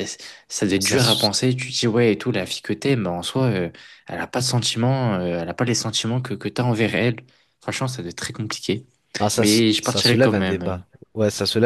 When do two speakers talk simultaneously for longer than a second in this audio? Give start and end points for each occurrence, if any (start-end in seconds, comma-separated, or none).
9.4-11.0